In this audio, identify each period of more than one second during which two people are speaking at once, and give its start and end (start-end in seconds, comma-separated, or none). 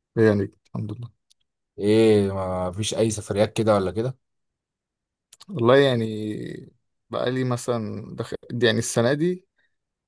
none